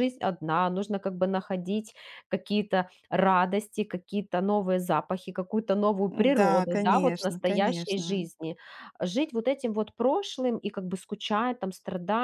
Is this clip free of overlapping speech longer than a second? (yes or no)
no